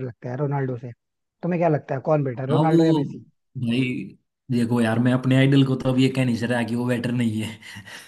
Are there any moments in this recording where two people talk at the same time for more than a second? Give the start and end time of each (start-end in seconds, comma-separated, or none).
none